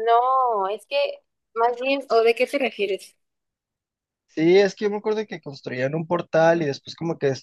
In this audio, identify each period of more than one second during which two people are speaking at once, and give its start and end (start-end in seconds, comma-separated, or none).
none